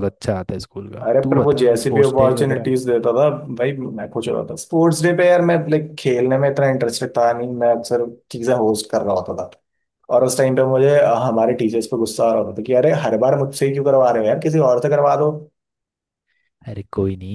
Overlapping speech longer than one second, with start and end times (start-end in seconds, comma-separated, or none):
1.0-2.7